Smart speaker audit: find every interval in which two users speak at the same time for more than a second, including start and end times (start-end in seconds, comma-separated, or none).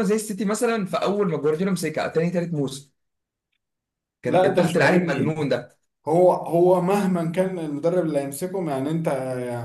4.3-5.5